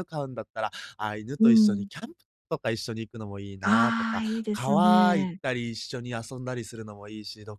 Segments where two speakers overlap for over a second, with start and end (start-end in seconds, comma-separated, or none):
3.6-5.4